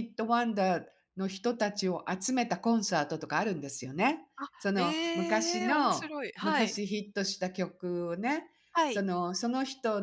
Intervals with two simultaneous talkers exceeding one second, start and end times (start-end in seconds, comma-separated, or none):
4.4-6.8